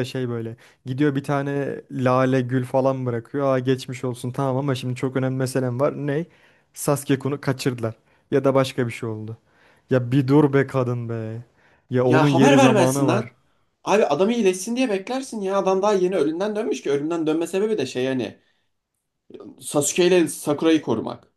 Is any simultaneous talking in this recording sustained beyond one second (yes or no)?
yes